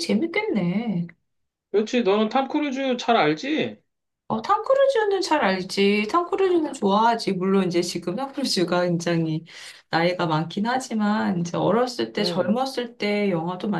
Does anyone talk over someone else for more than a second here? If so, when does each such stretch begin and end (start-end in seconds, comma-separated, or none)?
none